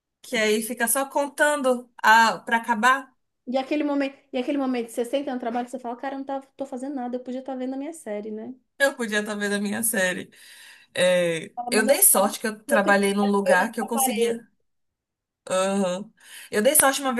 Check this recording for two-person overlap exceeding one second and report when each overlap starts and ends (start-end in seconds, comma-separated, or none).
11.5-14.4